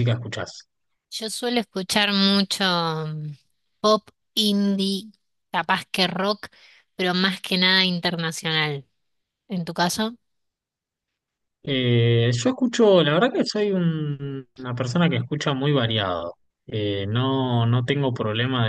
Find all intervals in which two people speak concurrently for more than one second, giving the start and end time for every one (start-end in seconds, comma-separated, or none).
none